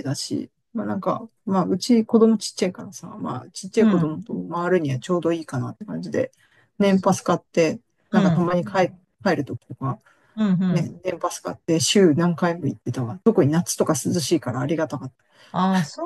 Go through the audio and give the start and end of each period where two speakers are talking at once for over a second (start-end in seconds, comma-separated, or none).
none